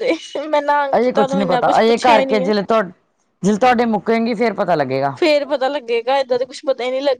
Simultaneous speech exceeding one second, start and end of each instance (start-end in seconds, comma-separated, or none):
0.9-2.5